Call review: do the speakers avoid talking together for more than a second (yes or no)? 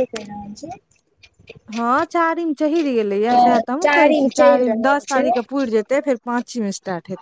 no